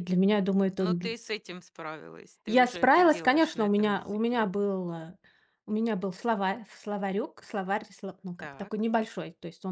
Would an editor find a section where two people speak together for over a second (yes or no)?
yes